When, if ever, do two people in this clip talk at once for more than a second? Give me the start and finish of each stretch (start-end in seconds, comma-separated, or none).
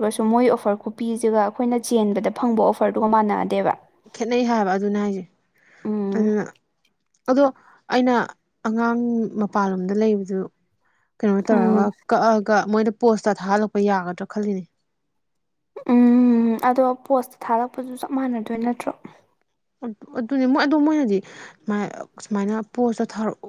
none